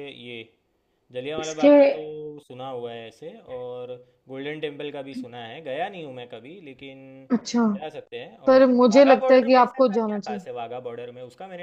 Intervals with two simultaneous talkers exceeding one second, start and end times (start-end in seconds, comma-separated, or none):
8.5-10.4